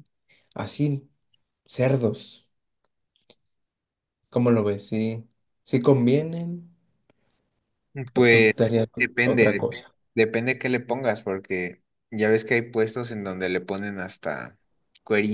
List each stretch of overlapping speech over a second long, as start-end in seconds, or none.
8.1-9.9